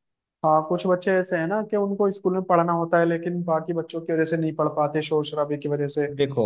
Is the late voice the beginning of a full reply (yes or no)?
yes